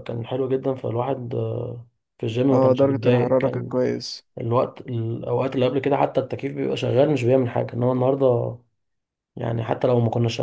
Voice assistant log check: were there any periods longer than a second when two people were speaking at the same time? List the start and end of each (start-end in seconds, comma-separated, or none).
2.5-3.8